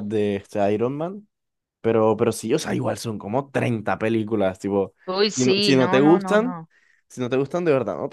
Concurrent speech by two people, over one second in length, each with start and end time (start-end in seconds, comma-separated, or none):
5.3-6.6